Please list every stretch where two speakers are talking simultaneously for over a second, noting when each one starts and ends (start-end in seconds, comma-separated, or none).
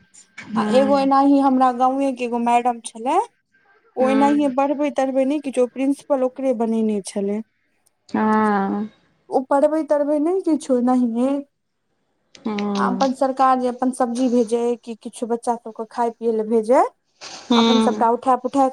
none